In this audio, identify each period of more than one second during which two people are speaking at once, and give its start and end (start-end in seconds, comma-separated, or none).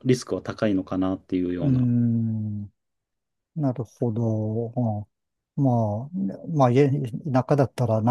none